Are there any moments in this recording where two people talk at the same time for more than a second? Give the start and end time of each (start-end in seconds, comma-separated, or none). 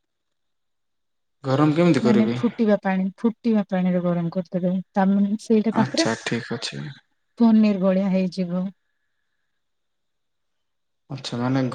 none